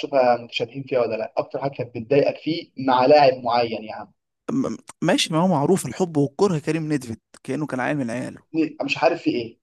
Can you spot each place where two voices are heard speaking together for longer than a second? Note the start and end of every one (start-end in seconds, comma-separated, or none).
none